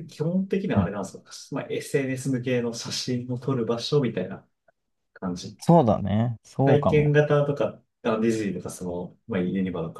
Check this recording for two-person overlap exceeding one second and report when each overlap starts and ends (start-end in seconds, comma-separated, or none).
none